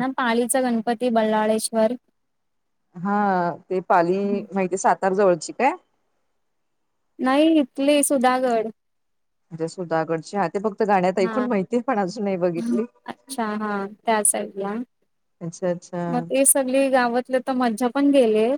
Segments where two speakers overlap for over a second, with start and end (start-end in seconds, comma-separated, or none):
none